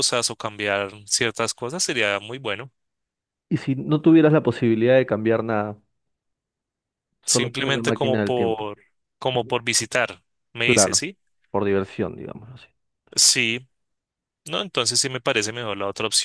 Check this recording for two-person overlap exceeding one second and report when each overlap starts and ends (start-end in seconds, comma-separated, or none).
7.2-8.7